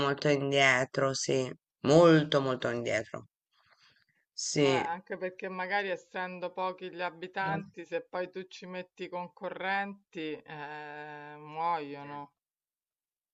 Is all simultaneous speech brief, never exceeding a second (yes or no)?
yes